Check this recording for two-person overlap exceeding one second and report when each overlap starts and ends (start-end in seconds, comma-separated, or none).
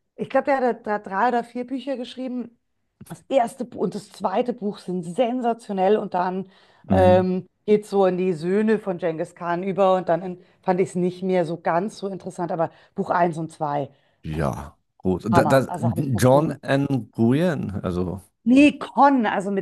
15.3-16.6